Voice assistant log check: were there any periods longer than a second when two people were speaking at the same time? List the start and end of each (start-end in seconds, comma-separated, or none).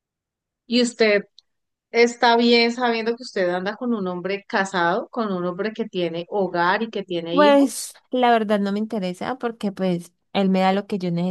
none